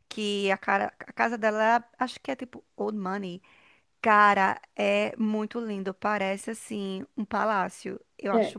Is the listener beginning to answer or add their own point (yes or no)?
yes